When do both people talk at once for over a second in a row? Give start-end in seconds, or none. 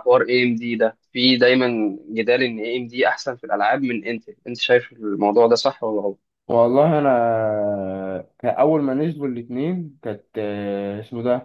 none